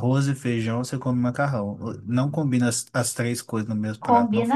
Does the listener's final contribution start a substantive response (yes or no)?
yes